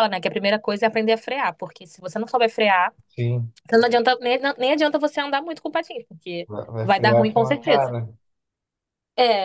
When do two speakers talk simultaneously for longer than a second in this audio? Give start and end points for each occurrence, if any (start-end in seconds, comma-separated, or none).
6.5-8.0